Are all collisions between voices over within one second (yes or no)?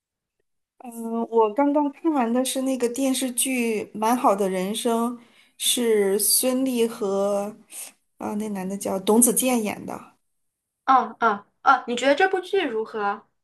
yes